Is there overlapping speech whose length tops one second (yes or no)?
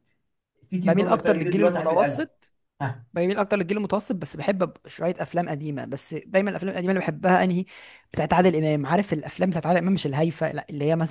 yes